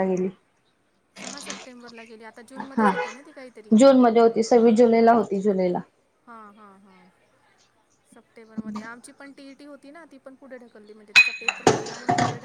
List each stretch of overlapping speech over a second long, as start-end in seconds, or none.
none